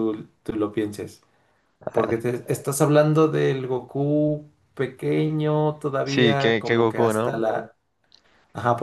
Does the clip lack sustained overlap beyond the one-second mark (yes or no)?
no